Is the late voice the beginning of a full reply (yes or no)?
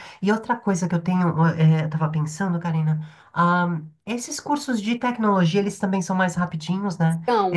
yes